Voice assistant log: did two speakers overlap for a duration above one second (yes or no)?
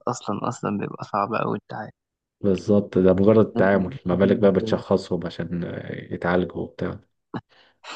yes